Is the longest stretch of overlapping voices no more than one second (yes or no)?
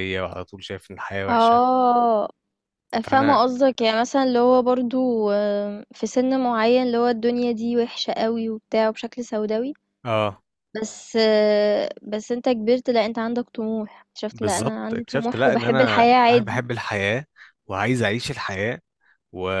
no